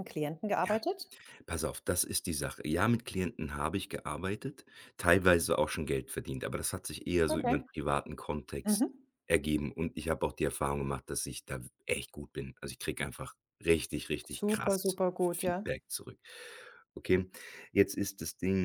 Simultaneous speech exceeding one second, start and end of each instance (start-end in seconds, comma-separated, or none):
14.3-15.7